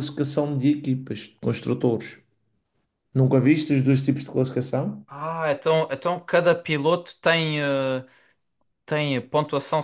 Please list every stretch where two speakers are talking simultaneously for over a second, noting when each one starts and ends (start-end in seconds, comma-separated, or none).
none